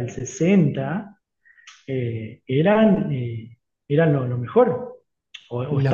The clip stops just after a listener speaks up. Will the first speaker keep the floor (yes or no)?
yes